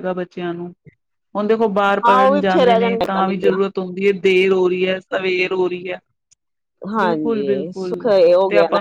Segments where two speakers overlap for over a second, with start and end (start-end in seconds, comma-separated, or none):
2.1-3.6